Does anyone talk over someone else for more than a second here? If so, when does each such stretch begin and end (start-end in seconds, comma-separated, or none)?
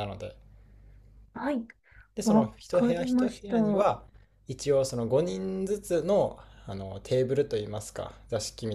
2.2-3.9